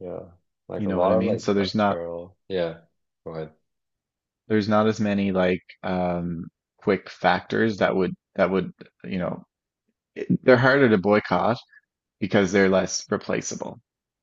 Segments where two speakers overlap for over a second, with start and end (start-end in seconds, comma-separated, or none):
0.8-2.0